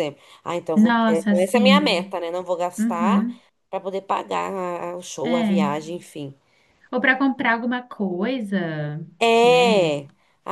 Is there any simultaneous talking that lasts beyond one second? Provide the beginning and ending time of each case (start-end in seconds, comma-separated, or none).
0.7-2.1